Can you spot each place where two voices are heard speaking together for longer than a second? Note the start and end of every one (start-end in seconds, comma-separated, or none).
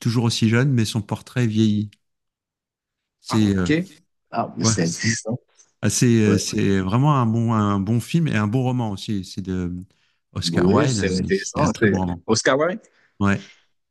10.4-12.2